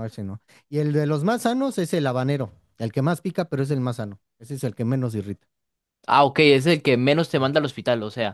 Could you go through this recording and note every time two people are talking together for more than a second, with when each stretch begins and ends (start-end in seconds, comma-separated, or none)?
none